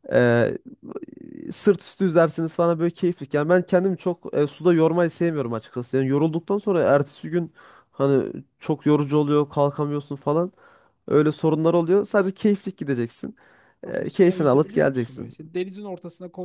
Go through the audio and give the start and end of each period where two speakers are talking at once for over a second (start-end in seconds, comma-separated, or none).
13.8-15.3